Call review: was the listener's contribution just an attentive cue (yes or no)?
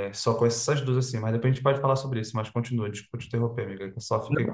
no